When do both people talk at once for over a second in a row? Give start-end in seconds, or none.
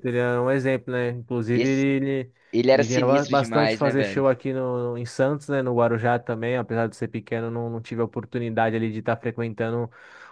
2.7-4.2